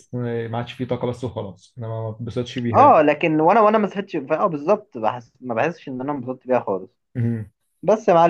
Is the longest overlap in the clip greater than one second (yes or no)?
no